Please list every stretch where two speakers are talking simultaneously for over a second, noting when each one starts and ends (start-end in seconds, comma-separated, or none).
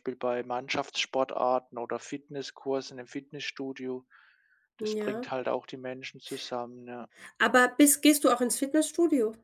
none